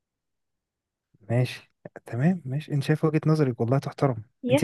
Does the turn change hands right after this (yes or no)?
no